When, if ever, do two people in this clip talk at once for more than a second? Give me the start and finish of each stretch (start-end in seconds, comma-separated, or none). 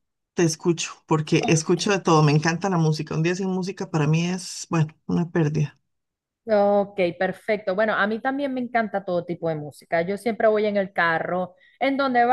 none